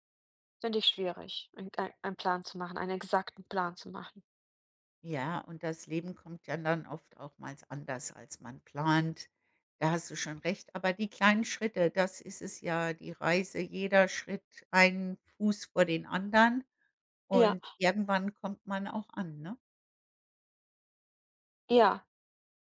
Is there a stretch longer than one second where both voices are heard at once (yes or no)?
no